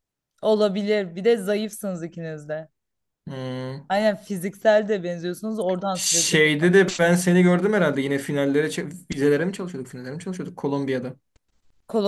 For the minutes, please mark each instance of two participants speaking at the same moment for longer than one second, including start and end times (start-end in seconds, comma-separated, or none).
none